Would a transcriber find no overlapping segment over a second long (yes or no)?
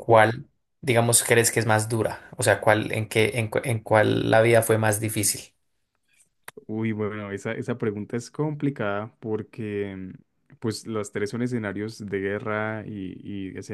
yes